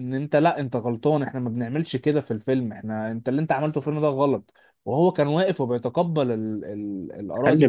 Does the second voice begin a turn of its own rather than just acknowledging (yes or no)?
yes